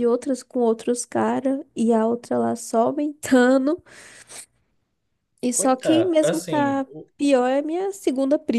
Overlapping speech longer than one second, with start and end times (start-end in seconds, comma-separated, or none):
5.5-7.1